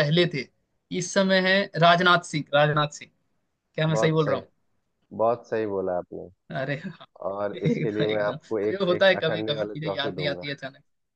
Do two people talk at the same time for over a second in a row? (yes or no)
yes